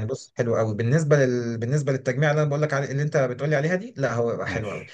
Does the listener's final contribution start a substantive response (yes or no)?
no